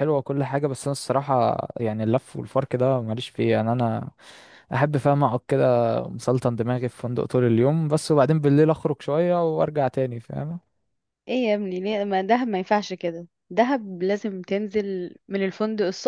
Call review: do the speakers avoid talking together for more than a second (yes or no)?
yes